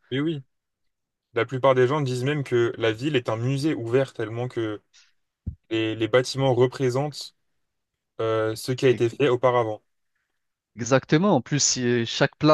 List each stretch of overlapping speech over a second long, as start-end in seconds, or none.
none